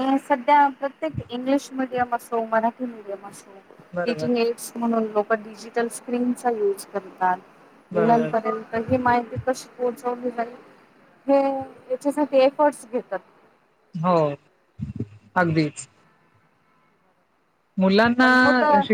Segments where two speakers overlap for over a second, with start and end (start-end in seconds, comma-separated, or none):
none